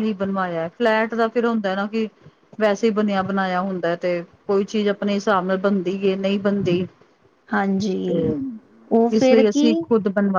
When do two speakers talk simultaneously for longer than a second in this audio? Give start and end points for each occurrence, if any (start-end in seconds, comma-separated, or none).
none